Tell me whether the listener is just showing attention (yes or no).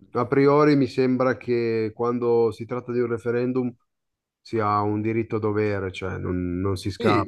no